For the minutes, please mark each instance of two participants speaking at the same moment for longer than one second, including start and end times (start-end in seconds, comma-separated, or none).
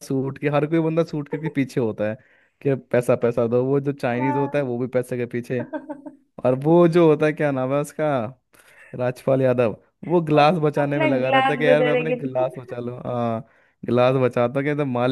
10.4-12.7